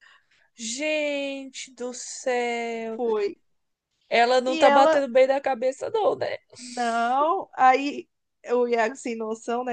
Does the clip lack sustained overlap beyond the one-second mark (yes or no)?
yes